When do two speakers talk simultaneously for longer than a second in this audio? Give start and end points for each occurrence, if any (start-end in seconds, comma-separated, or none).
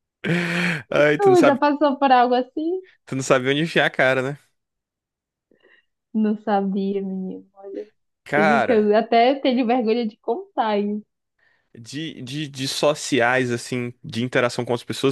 none